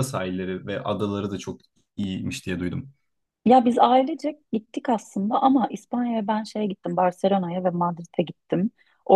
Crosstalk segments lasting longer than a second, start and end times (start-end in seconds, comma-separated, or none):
none